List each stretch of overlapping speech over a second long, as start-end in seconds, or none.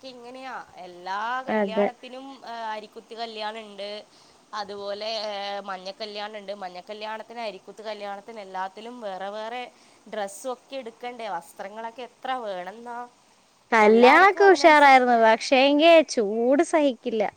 none